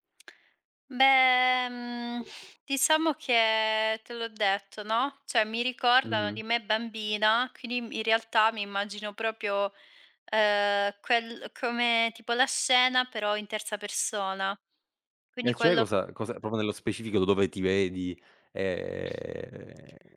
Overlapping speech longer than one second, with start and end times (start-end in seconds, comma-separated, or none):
none